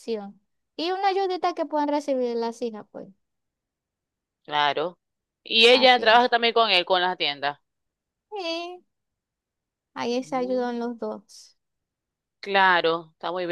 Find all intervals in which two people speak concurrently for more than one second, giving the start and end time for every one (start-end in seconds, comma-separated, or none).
none